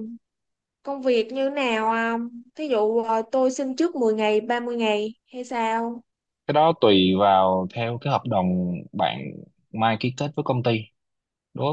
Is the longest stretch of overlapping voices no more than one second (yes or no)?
yes